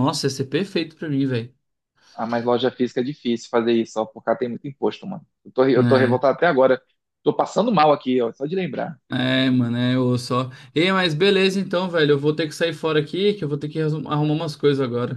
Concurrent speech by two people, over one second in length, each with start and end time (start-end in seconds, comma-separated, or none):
none